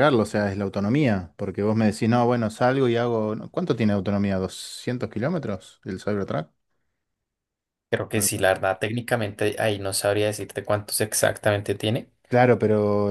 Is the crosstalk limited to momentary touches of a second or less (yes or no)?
yes